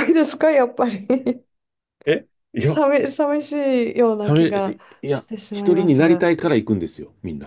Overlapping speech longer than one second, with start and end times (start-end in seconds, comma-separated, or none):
4.2-6.3